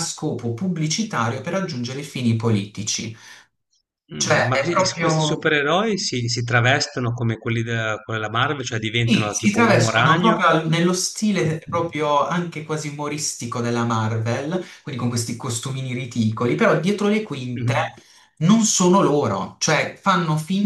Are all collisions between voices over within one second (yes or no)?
no